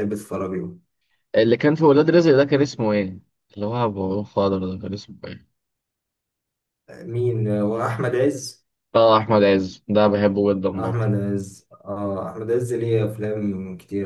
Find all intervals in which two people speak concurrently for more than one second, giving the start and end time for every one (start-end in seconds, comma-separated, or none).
none